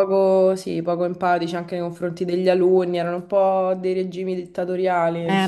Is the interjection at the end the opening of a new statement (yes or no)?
yes